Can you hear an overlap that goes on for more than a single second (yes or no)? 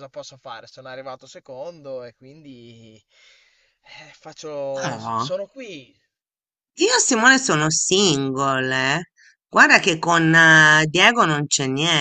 no